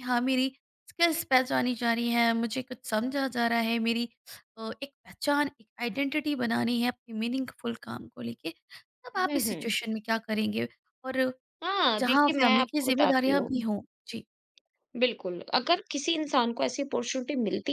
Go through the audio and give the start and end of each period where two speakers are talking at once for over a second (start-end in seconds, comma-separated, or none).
12.0-13.6